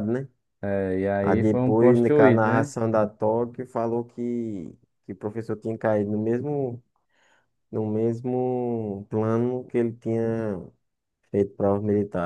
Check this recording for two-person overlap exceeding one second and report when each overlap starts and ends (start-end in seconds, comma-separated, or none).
1.2-2.7